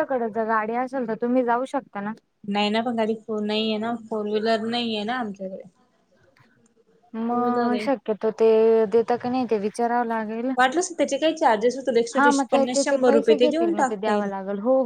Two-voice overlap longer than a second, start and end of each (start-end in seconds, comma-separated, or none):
12.5-14.3